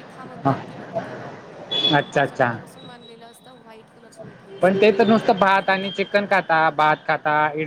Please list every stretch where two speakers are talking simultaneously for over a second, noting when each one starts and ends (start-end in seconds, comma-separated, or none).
4.6-6.4